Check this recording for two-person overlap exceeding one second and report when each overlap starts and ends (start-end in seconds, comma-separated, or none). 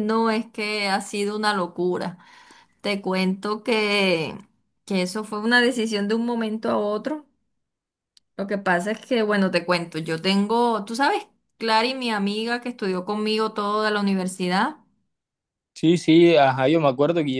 none